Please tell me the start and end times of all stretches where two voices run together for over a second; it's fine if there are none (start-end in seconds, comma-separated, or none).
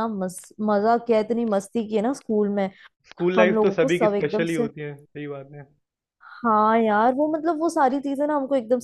3.4-4.7